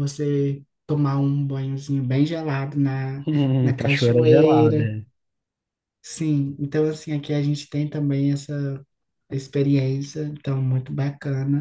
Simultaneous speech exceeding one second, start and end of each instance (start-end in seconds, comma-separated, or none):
3.6-4.9